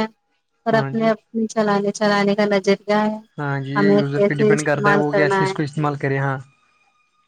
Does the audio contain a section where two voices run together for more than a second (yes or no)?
yes